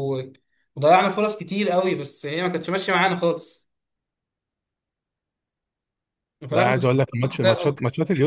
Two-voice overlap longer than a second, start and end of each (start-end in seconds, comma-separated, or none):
6.5-7.8